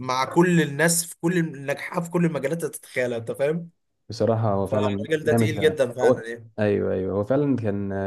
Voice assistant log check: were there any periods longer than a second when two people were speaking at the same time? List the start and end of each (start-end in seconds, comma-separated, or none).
4.6-6.2